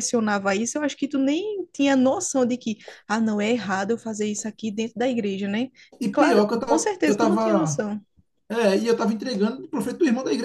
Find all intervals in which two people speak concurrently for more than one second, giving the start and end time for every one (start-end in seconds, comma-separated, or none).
6.1-7.8